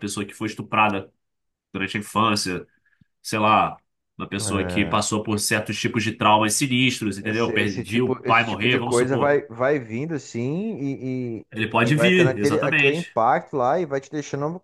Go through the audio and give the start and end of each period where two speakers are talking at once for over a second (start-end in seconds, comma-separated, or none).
7.2-9.3, 11.8-13.2